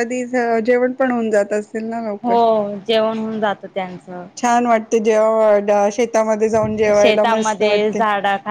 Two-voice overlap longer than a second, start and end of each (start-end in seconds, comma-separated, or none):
none